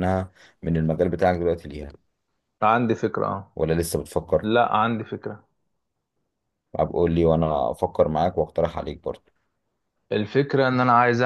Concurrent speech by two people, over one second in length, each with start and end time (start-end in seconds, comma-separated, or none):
none